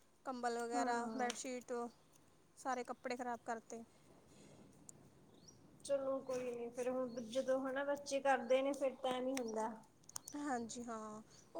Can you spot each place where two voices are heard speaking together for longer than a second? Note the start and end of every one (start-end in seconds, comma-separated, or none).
none